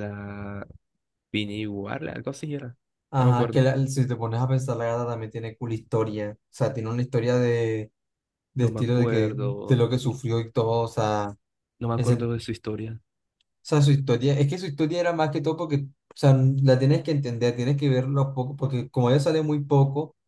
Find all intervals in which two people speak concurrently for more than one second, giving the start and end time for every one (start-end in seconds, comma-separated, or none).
8.6-10.2